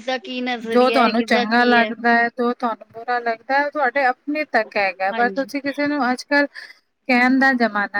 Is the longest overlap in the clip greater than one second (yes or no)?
yes